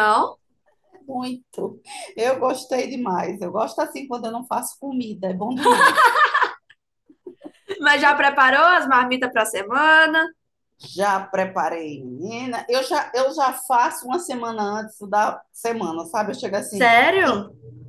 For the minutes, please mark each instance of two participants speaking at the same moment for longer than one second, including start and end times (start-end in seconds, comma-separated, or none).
none